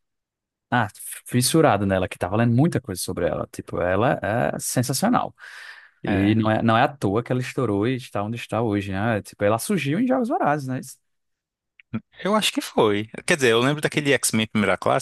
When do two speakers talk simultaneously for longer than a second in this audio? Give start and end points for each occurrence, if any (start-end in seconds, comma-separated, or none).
none